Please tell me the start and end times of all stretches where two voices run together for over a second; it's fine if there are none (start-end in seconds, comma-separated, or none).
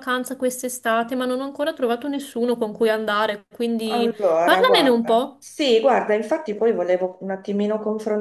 3.8-5.3